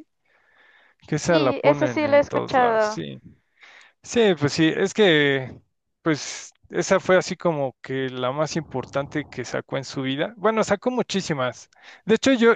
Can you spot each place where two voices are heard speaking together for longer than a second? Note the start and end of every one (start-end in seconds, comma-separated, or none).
1.2-3.0